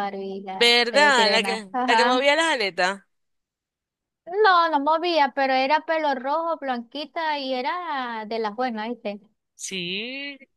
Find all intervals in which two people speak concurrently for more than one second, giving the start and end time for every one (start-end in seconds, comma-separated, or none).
0.5-2.2